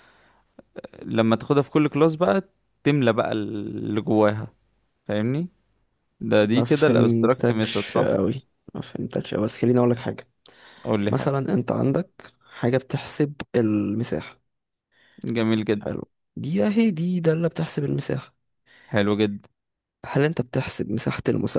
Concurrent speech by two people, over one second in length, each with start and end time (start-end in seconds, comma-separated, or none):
6.5-8.1